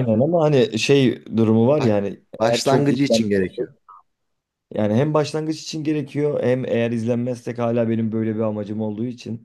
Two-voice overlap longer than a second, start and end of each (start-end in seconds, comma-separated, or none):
1.8-3.7